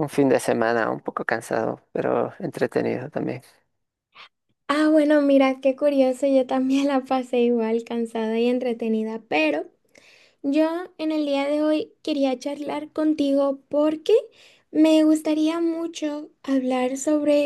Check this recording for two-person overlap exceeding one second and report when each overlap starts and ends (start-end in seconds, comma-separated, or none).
none